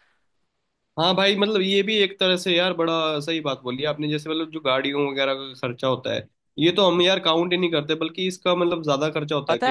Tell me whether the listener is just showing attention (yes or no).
no